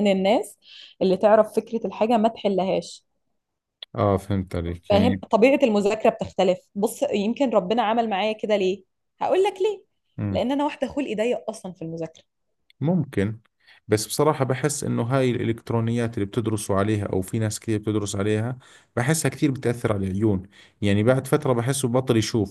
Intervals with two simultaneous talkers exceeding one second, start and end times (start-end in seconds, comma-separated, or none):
none